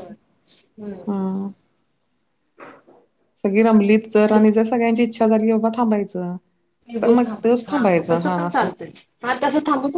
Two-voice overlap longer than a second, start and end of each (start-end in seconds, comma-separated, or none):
7.0-8.7